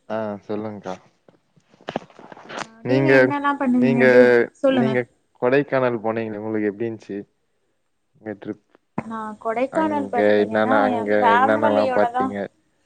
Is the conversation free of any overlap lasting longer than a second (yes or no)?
no